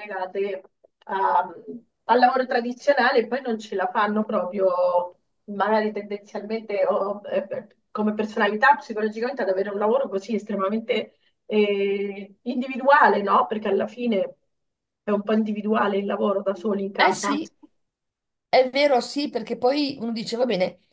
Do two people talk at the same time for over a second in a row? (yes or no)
no